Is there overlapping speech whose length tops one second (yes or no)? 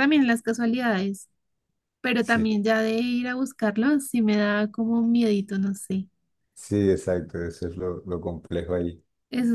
no